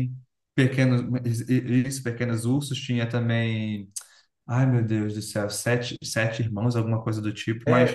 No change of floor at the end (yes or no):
no